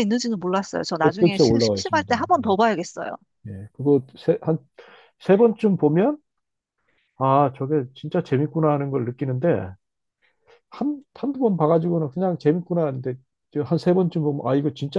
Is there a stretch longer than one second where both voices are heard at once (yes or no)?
yes